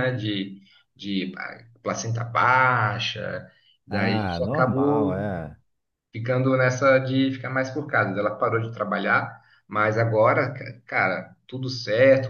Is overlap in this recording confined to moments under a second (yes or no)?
no